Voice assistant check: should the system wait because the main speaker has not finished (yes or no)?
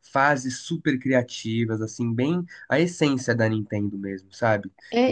no